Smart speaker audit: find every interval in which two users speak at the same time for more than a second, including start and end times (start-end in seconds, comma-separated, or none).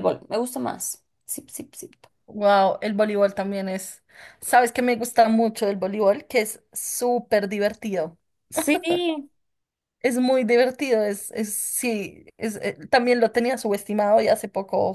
none